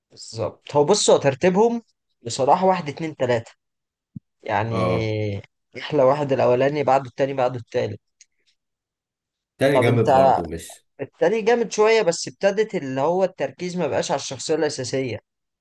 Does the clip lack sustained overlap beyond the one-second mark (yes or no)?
yes